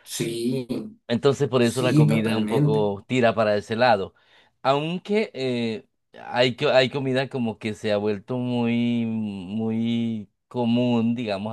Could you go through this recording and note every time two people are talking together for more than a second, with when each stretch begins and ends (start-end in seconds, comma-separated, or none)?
1.6-2.9